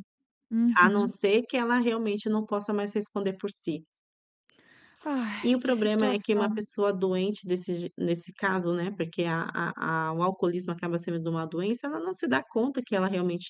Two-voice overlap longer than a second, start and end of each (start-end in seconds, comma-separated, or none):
5.4-6.6